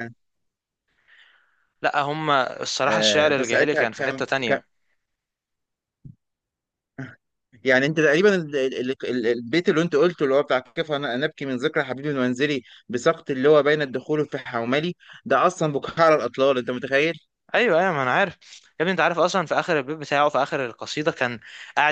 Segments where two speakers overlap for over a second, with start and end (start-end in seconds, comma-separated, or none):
2.8-4.3